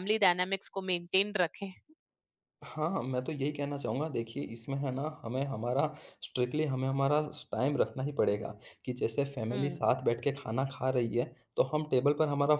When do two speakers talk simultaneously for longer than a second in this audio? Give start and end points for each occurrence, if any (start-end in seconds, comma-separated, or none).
none